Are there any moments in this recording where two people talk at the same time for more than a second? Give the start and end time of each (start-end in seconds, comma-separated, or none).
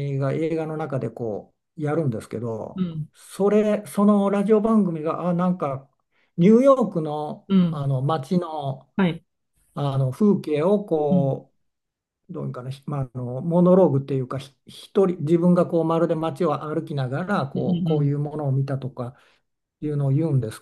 none